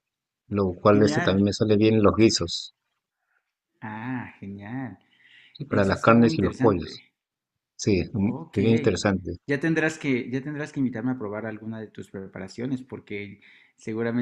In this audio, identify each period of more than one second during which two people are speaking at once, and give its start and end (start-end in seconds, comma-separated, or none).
5.7-7.0